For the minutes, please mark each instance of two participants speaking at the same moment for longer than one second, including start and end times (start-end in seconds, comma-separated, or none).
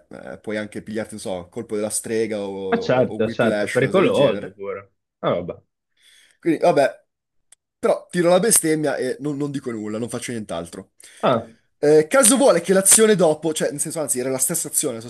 2.7-4.6